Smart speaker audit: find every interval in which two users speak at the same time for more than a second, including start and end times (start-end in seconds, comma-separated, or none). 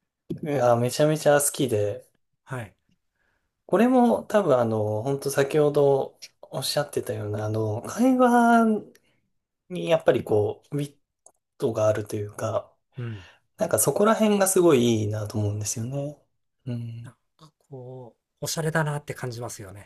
none